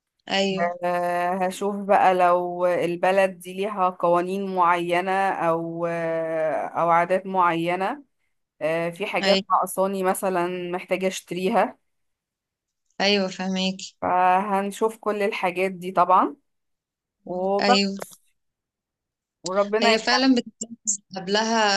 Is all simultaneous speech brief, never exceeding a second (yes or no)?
yes